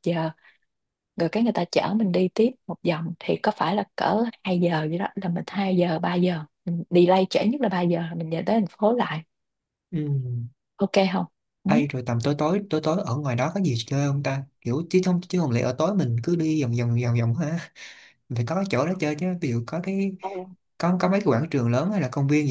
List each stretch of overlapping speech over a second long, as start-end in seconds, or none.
none